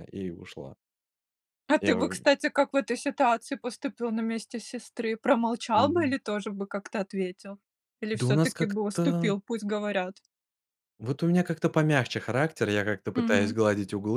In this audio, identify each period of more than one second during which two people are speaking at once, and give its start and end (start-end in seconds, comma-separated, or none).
8.1-9.3